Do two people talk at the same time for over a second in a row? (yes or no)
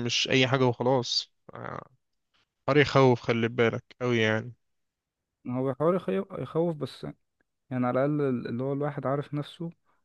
no